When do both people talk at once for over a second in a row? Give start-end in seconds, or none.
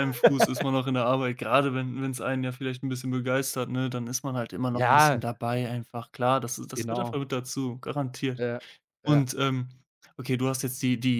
none